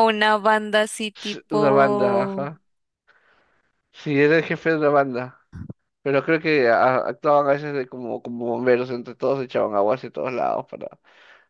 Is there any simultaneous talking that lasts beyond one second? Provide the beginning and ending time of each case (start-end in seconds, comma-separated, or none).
1.1-2.5